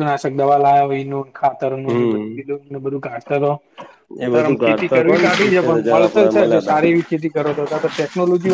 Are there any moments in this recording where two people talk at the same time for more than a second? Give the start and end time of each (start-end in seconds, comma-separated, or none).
4.3-6.8